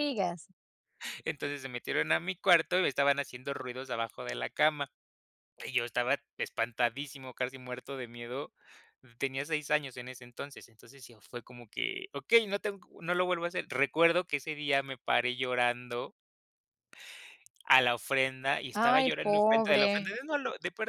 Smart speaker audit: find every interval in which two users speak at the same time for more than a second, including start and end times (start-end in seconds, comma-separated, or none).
18.7-20.2